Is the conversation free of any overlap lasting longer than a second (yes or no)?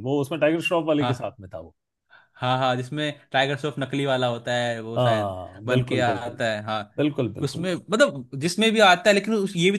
no